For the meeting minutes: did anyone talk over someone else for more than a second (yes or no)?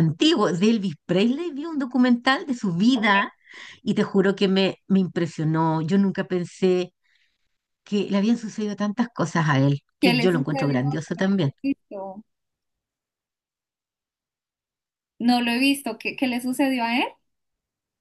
yes